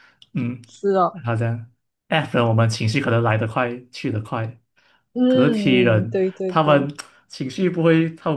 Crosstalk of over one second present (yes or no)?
yes